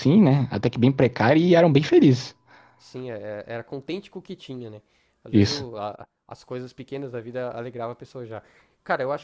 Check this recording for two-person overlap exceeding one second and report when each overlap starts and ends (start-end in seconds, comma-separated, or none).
none